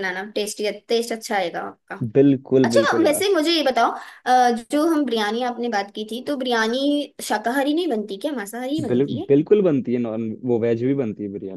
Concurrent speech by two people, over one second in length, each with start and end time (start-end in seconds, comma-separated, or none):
none